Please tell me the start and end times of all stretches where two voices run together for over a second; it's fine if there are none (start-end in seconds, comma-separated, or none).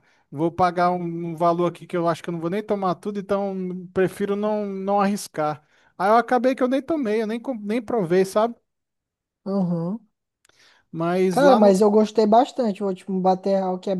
none